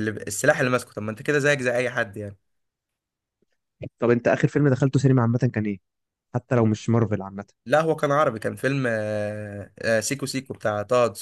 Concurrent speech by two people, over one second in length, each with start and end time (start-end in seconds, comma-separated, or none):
none